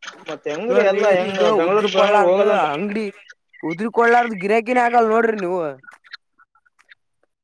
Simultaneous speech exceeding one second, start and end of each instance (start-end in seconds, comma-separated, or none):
0.7-2.6